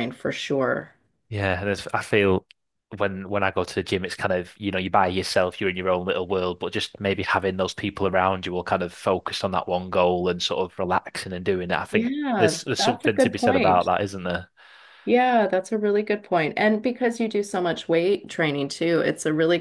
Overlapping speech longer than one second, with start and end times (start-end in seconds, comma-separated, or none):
11.9-13.9